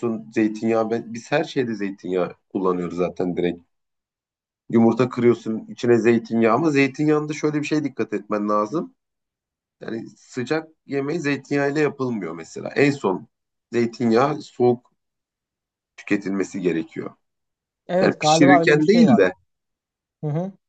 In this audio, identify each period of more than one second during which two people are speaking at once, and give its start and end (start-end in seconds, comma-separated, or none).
18.0-19.2